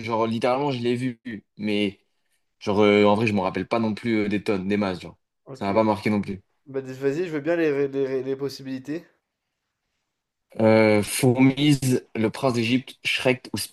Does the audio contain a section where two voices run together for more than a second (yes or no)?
no